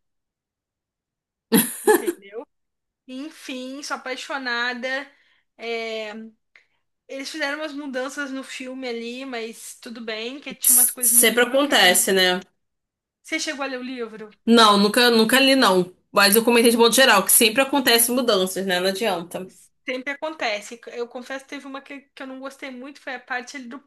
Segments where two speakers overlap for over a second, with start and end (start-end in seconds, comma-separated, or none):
10.6-12.1